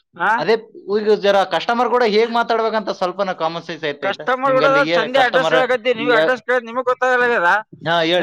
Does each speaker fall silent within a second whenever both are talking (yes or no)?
yes